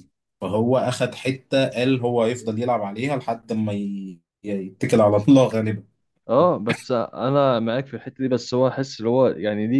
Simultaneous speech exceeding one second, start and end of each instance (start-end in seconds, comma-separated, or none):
none